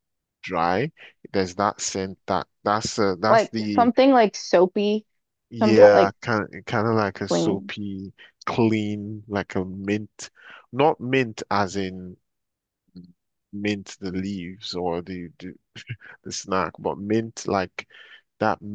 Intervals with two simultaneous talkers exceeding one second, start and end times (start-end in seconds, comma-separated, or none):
none